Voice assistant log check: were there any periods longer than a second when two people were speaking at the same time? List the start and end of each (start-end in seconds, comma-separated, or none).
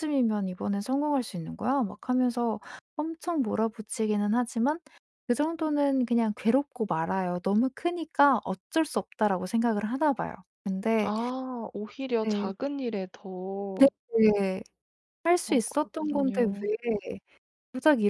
15.5-16.7